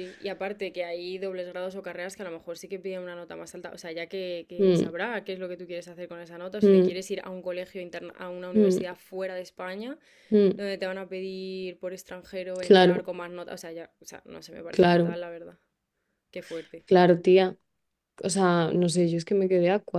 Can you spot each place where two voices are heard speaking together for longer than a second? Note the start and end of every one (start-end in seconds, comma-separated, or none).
none